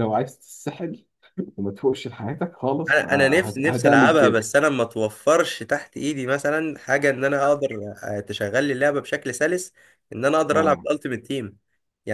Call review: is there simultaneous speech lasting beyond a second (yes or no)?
yes